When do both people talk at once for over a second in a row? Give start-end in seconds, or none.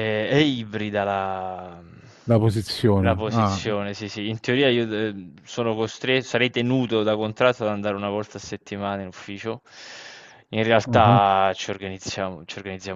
none